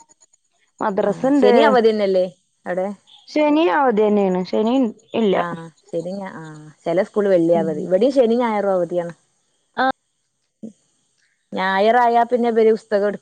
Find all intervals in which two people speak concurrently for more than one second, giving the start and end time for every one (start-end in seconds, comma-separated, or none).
none